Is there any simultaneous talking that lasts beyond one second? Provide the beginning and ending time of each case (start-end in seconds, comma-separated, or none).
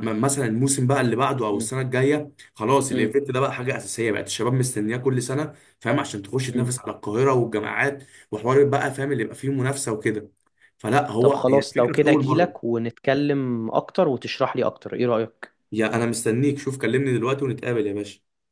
11.2-12.7